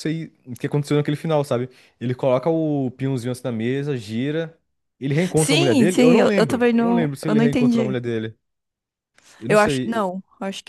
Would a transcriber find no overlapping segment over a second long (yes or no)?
no